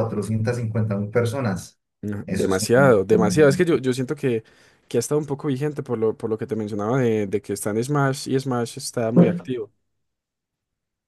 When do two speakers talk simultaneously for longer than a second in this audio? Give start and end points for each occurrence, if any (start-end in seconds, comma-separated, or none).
2.3-3.7